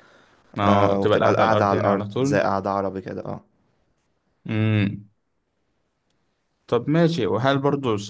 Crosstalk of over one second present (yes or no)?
yes